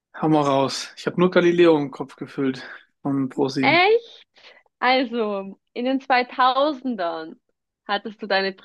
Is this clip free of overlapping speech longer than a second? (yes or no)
yes